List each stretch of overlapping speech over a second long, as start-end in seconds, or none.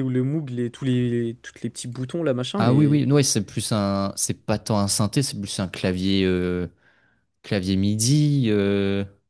none